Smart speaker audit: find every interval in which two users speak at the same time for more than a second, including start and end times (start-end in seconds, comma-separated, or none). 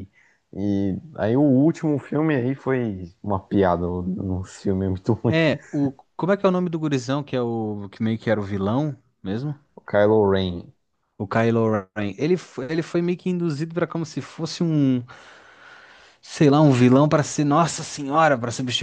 none